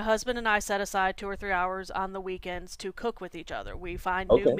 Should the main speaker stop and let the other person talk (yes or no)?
no